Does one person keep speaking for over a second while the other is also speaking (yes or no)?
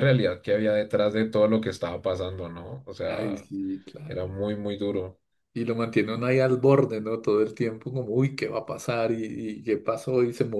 no